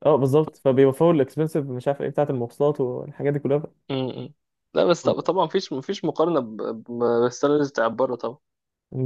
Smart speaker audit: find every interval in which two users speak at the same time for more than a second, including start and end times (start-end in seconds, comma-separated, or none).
none